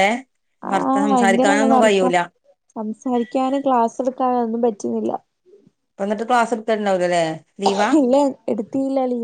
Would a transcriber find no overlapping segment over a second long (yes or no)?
no